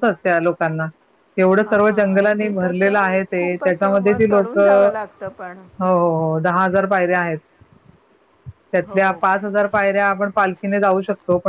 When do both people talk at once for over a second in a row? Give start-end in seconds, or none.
1.6-4.9